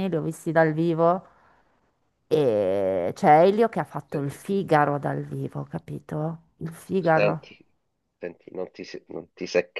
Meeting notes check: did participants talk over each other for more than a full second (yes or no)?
no